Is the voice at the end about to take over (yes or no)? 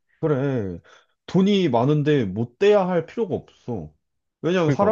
no